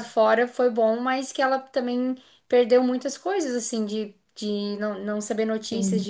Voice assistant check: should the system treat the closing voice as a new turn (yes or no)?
no